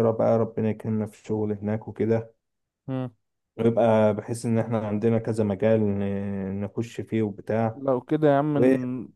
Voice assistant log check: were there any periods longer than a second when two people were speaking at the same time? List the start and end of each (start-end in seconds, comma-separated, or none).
none